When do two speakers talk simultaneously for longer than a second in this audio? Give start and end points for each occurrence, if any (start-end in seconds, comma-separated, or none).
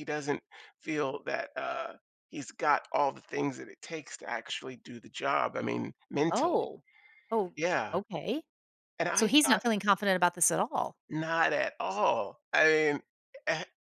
none